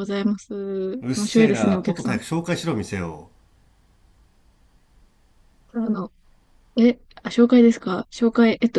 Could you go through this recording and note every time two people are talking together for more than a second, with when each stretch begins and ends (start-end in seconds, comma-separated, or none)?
1.0-2.2